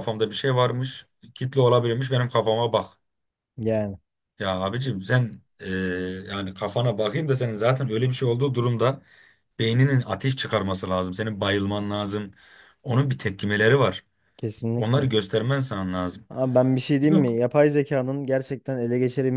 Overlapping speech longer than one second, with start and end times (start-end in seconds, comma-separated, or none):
none